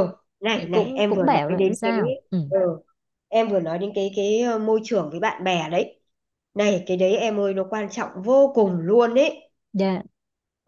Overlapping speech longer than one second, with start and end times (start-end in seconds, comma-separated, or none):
0.6-1.9